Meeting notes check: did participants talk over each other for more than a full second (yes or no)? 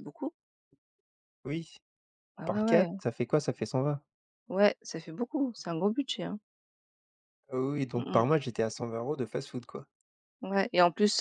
no